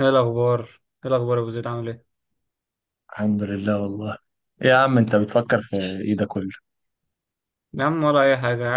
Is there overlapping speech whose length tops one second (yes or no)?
no